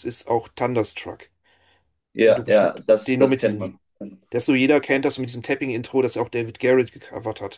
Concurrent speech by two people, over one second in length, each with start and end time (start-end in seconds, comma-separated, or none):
2.3-3.7